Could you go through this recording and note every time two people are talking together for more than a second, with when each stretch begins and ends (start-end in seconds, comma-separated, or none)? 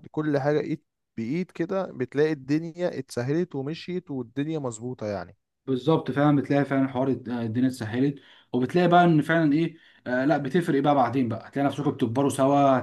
none